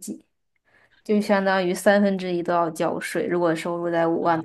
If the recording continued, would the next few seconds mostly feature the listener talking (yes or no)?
yes